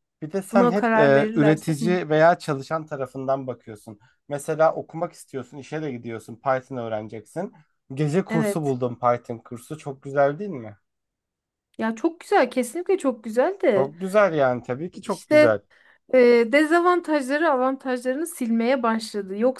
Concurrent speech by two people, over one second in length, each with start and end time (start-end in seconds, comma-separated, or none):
0.5-1.9